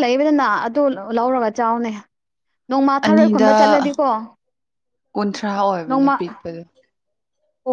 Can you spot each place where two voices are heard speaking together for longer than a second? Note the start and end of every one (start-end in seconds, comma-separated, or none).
none